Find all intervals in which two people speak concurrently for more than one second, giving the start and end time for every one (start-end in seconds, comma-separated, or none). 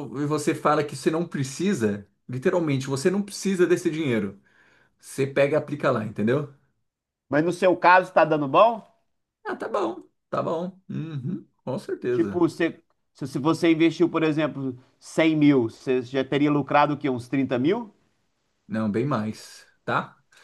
none